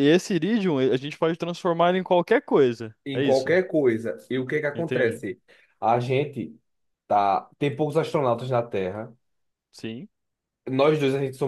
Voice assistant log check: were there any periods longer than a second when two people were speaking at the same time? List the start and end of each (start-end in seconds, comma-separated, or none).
none